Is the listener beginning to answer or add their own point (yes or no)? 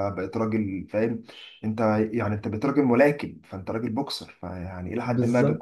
no